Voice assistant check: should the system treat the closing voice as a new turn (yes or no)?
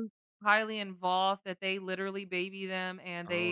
no